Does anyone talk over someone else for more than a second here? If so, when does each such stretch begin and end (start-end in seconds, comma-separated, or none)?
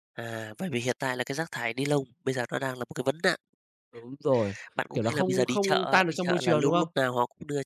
4.9-6.9